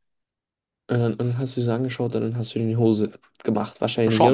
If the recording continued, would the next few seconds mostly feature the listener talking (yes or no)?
yes